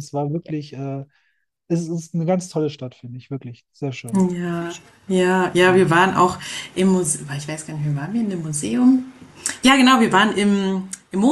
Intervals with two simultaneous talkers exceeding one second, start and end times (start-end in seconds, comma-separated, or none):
none